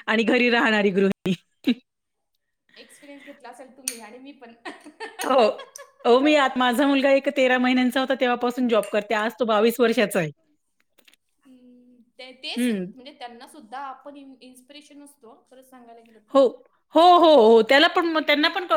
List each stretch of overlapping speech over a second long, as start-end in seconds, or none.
none